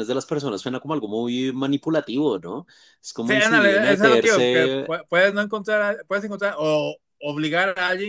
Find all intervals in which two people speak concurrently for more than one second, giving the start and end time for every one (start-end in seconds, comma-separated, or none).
3.2-5.0